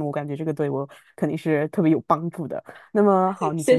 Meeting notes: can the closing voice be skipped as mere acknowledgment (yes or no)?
yes